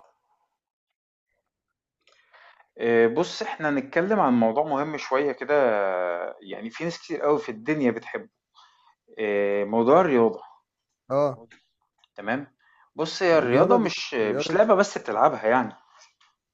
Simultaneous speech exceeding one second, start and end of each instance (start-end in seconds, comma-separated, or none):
13.3-14.7